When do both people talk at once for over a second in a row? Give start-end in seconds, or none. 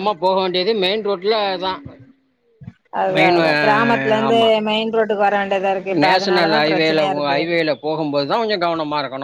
6.0-7.4